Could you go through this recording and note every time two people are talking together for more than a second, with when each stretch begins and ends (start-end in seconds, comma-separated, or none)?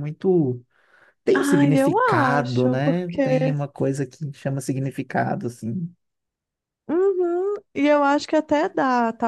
1.4-3.5